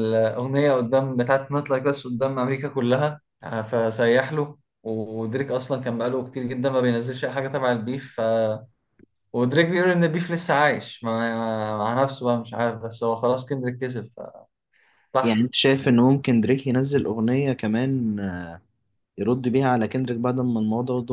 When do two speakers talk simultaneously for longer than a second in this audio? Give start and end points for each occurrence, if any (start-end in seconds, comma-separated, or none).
none